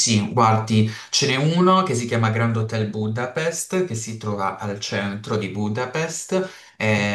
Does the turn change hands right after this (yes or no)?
no